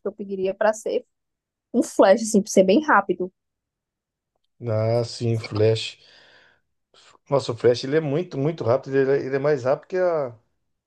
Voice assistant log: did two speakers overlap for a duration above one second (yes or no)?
no